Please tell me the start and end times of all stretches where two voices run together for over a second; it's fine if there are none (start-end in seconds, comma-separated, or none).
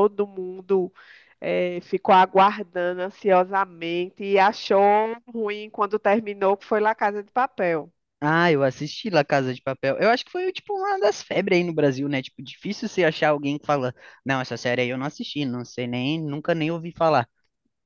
none